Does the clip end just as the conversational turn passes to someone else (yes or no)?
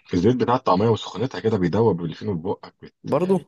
no